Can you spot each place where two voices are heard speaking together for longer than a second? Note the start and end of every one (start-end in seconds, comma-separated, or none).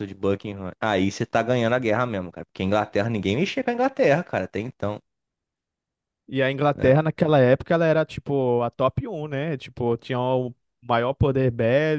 none